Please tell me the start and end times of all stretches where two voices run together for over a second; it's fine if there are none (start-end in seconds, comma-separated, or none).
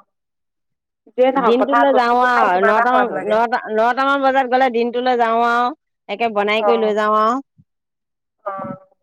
1.5-3.4